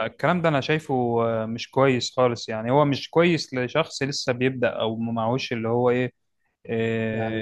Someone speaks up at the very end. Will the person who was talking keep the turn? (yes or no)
yes